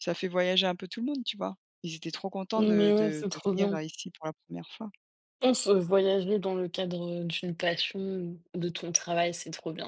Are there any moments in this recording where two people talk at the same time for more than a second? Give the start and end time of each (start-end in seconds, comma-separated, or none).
2.6-3.8